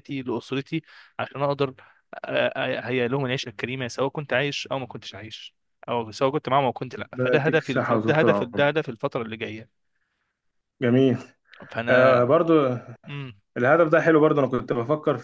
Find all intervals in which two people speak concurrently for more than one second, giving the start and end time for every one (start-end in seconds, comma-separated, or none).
7.2-8.7